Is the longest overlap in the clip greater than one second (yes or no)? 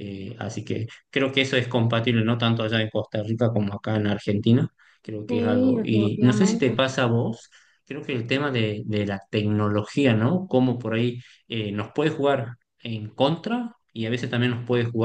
yes